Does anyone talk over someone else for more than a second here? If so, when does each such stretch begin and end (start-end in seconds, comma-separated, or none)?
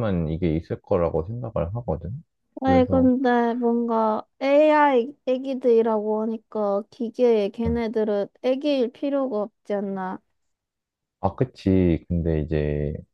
none